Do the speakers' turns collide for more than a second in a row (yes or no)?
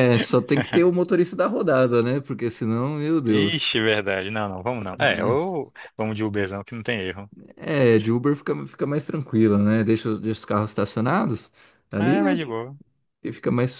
no